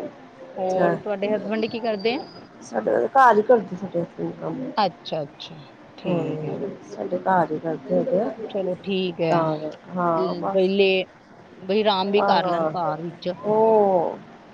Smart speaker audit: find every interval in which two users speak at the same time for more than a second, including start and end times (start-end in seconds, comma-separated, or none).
none